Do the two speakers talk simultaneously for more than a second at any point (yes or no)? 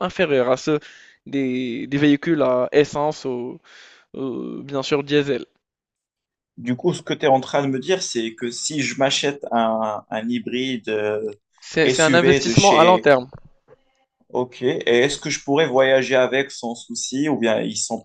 yes